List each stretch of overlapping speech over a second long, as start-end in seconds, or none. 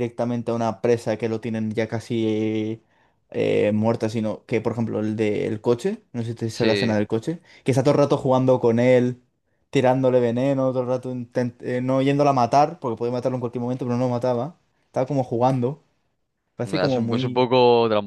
none